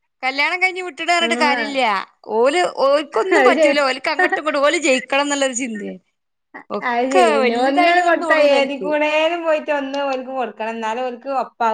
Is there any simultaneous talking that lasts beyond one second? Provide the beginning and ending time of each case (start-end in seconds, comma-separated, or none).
6.8-8.9